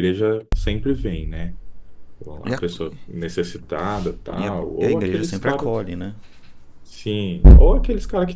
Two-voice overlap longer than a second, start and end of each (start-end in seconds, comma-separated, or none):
4.3-5.7